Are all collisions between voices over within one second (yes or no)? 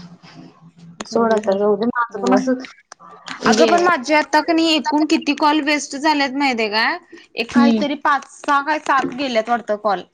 no